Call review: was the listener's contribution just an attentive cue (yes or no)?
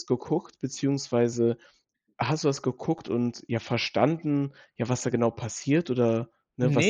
no